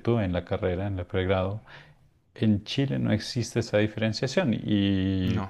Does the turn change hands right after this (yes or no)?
no